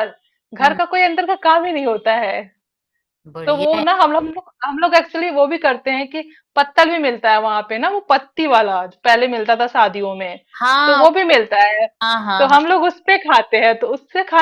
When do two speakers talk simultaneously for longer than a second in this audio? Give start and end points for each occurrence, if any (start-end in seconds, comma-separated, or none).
none